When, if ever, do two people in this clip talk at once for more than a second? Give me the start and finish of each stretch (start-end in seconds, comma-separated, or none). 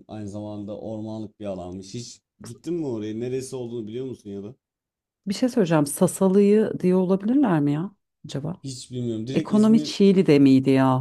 none